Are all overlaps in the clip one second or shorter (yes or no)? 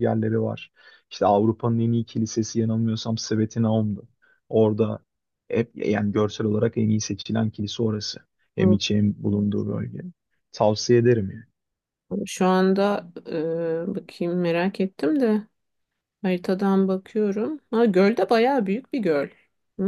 yes